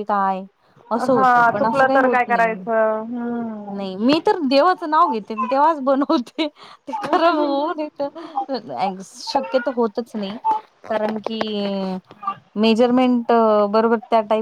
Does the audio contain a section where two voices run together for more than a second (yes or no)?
yes